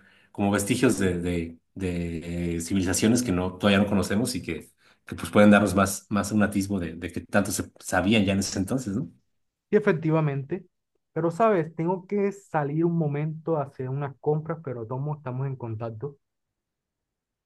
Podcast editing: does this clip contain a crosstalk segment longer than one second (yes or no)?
no